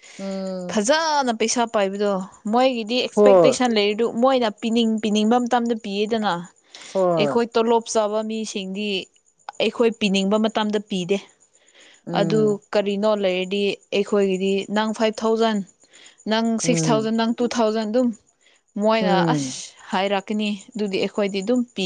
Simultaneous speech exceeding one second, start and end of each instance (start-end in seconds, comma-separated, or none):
none